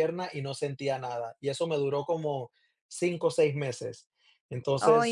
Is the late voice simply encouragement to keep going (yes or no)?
yes